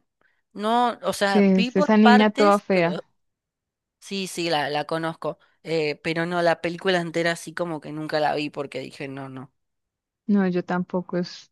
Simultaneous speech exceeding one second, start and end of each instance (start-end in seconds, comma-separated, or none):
1.3-3.0